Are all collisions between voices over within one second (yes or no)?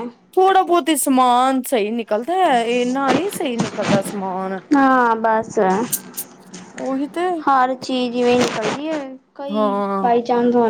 yes